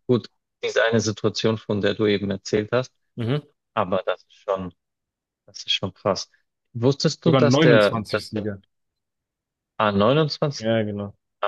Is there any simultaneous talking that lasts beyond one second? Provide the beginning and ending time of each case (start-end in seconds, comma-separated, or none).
7.3-8.5